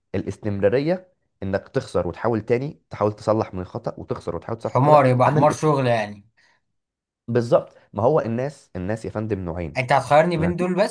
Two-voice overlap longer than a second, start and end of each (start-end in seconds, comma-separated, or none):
4.6-5.9